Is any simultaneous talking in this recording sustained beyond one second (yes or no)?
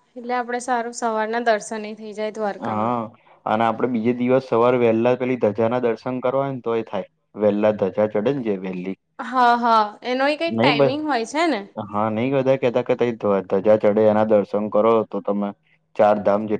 no